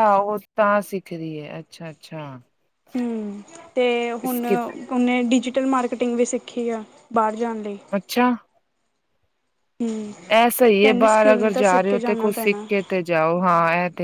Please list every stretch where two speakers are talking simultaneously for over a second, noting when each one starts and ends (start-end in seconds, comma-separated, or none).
10.8-12.7